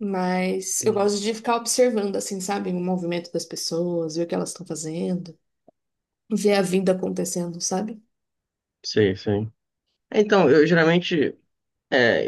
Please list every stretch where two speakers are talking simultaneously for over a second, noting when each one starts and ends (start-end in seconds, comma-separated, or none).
none